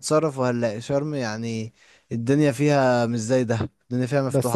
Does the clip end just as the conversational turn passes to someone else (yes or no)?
yes